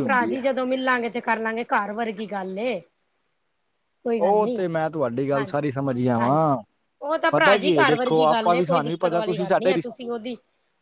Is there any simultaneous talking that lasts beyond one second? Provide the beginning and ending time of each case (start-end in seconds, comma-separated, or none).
7.3-10.0